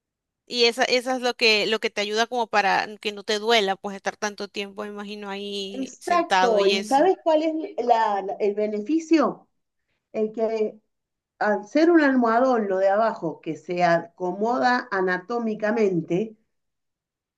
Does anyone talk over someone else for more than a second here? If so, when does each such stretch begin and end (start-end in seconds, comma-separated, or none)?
5.7-7.1